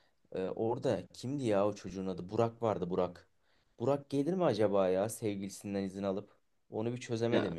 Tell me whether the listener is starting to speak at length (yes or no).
no